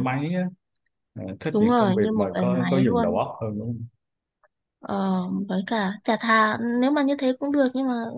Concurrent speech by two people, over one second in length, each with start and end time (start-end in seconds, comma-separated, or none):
1.5-3.2